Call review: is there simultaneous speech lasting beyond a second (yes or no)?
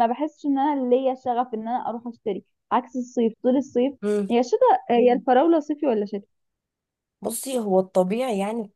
no